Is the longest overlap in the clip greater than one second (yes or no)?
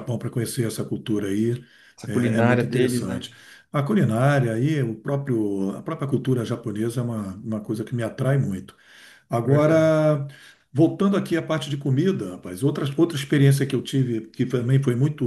yes